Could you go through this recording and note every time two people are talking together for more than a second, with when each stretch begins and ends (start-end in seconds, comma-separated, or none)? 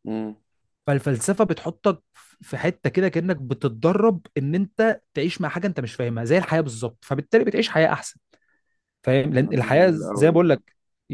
9.4-10.6